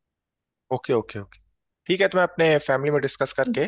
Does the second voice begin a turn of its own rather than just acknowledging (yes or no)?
no